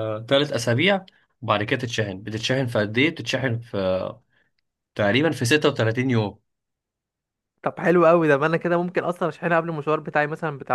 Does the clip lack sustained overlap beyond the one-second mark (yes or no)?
yes